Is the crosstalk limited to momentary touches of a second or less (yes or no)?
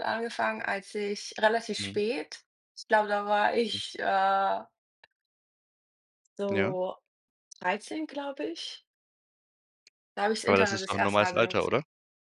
no